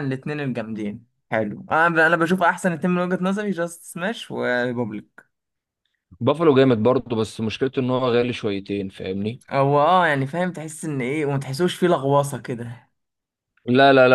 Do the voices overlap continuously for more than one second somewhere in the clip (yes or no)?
no